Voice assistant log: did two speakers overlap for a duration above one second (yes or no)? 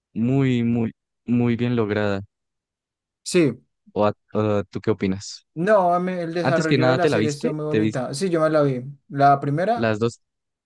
yes